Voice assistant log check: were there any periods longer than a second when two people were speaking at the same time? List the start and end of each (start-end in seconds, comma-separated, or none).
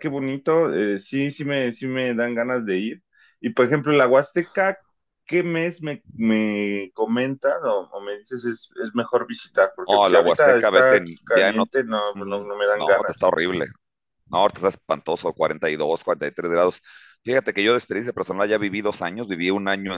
9.8-13.3